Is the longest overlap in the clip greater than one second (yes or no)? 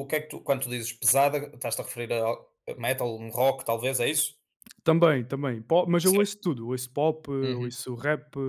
no